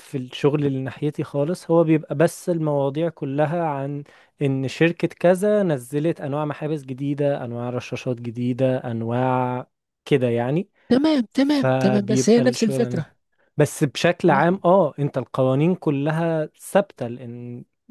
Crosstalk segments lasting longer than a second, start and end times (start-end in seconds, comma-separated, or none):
11.4-13.0